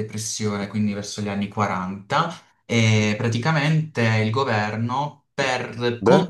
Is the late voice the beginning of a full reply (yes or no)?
no